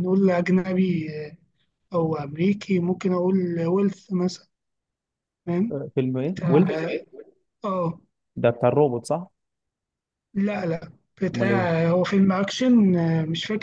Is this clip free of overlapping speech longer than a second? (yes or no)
yes